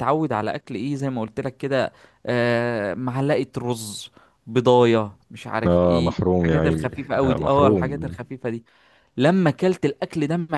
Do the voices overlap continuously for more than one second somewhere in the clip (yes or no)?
yes